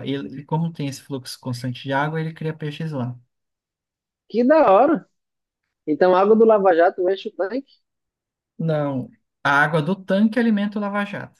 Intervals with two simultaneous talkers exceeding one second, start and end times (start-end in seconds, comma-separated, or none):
none